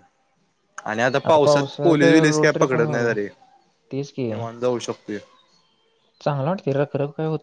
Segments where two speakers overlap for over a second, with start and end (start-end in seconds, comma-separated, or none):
1.4-3.1